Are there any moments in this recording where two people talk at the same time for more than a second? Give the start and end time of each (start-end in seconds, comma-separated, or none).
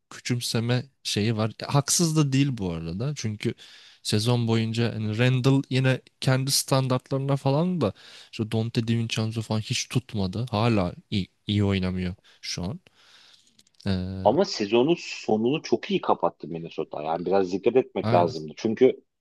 none